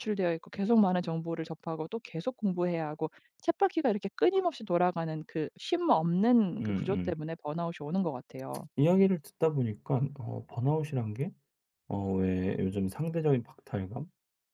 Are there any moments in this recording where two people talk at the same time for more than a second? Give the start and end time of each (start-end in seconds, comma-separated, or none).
none